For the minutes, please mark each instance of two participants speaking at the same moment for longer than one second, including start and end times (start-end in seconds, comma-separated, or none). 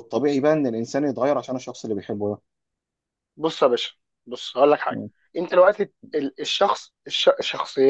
none